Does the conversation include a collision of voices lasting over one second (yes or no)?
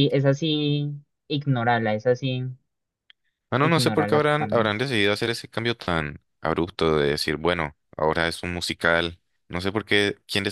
yes